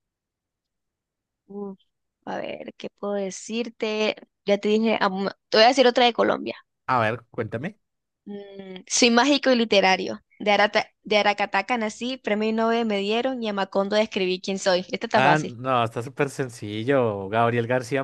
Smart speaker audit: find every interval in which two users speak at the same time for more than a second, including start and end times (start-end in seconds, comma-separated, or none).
none